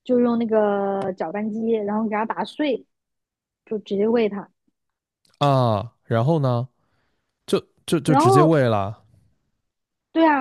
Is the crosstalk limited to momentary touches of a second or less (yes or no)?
yes